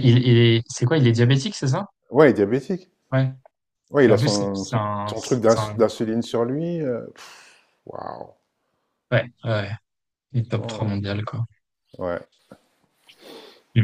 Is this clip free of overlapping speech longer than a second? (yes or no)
no